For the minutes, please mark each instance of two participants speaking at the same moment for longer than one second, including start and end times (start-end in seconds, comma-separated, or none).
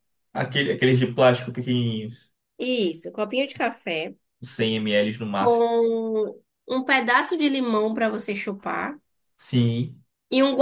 none